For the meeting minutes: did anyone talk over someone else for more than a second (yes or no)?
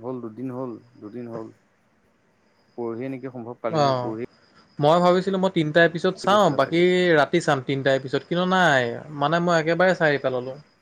no